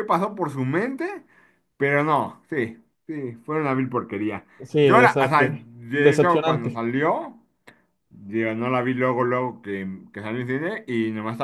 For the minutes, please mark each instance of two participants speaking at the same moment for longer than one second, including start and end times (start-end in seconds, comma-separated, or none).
4.8-6.8